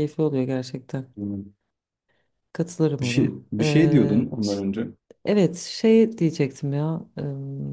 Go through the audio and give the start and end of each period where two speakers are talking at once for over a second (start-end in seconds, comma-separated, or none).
3.0-4.6